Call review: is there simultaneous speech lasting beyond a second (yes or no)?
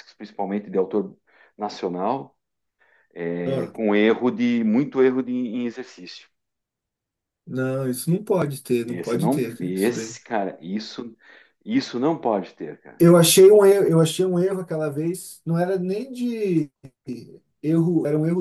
yes